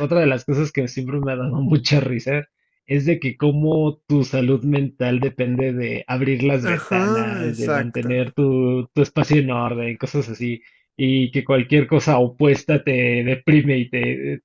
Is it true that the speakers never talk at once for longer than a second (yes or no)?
no